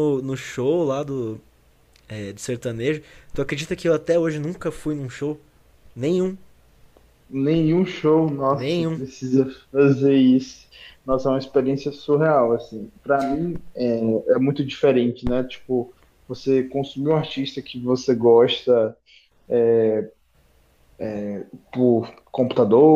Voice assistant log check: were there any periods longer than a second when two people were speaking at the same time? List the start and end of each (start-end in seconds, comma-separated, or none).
none